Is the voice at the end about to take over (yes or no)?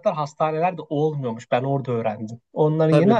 yes